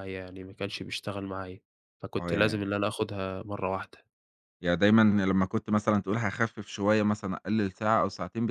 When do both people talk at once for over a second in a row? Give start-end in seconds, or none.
none